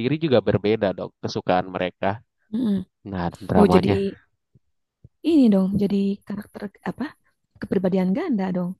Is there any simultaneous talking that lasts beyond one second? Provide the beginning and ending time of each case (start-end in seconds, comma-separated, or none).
none